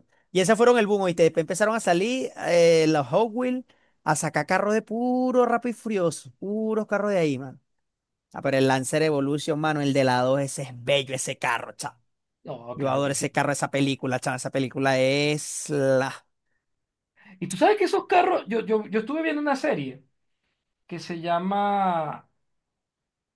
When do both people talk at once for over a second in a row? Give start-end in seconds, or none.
none